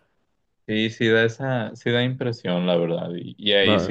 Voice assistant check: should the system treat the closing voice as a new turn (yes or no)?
no